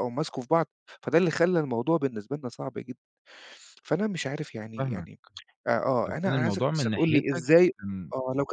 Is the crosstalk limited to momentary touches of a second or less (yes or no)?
no